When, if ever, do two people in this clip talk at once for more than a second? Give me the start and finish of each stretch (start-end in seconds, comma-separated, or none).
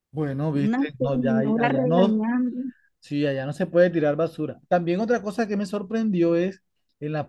0.6-2.2